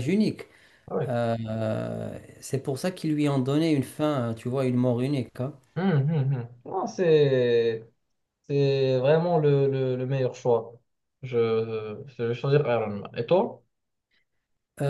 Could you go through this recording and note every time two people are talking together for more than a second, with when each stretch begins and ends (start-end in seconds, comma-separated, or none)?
none